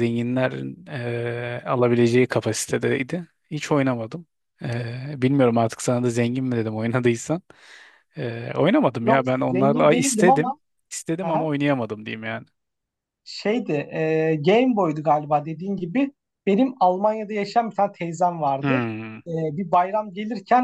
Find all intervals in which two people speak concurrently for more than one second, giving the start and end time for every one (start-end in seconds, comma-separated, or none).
9.0-10.5